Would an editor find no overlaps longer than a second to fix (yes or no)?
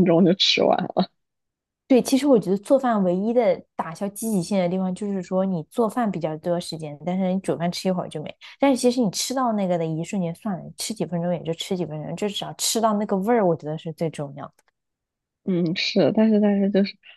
yes